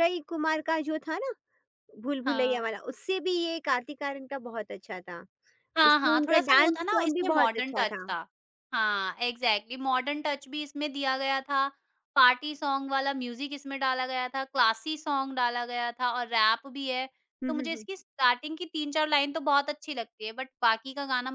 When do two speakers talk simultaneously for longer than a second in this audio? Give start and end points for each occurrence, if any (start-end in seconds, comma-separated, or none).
5.8-8.1